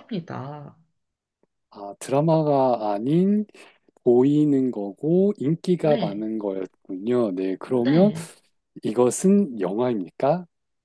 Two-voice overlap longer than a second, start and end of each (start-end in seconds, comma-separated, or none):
none